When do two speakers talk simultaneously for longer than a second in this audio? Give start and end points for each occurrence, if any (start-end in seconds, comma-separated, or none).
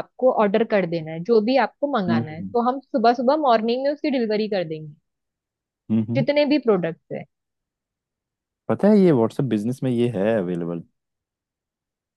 none